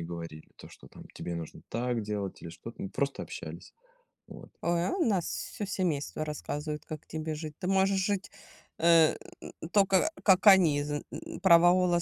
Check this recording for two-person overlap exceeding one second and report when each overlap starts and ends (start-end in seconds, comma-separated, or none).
none